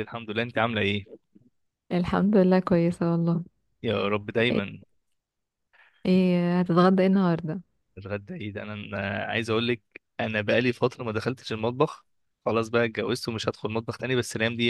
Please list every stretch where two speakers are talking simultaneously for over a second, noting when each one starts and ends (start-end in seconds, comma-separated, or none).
none